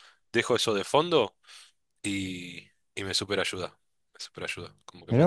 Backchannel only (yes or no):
no